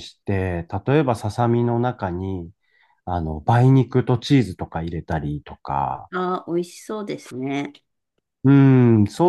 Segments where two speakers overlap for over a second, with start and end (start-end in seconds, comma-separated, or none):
none